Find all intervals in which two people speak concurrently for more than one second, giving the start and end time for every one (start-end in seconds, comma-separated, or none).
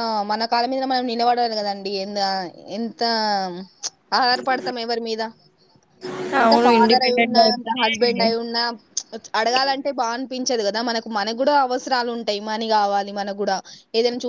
6.4-8.2